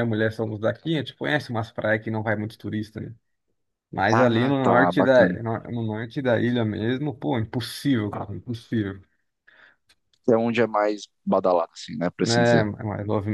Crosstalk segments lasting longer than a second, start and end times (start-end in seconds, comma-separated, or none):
4.1-5.4